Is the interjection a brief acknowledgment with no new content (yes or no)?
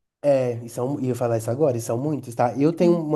yes